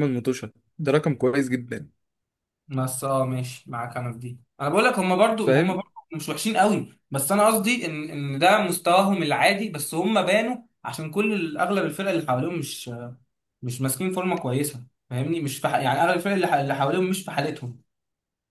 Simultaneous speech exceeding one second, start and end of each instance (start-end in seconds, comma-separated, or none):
none